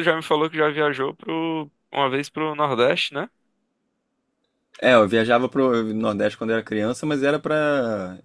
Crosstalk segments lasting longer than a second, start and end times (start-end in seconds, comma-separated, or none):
none